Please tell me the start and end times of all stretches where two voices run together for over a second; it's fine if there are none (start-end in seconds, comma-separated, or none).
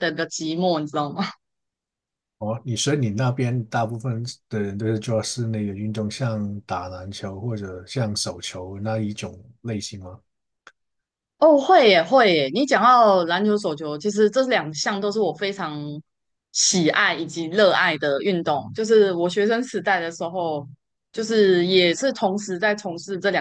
none